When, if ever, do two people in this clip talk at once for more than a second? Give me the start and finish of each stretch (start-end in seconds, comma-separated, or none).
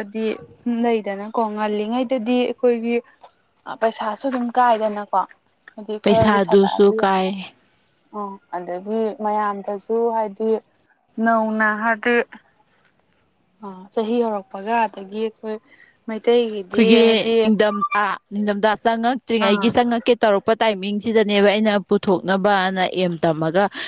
6.0-7.4